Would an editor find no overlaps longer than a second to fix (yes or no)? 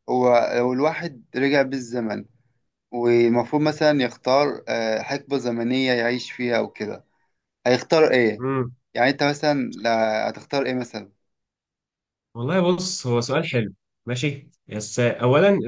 yes